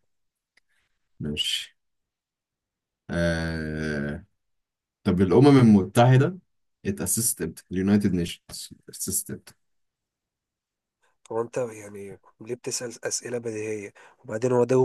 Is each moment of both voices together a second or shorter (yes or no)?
yes